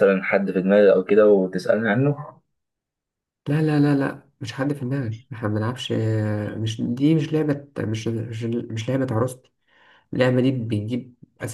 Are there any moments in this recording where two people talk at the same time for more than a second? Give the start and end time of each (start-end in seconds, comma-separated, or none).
none